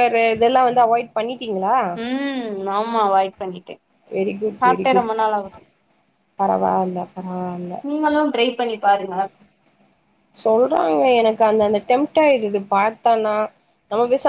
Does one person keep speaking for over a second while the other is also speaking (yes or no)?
no